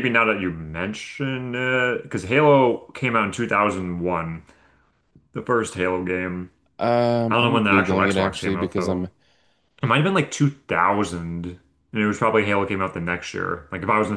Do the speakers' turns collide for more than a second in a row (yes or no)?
yes